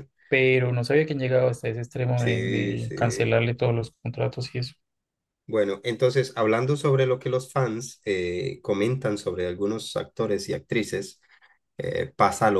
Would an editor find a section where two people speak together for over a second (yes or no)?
yes